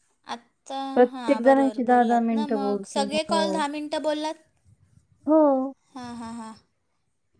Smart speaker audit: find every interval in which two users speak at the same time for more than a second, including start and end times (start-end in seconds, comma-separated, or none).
0.9-3.6